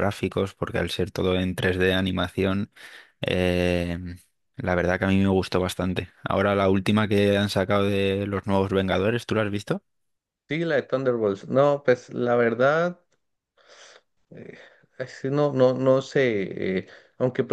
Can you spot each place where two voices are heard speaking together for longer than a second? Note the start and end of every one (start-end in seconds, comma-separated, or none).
none